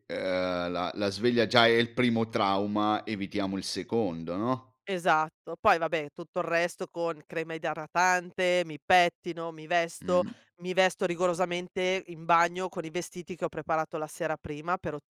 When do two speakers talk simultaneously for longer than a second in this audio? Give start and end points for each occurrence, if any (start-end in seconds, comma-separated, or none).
none